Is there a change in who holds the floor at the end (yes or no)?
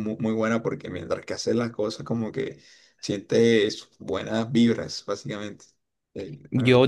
yes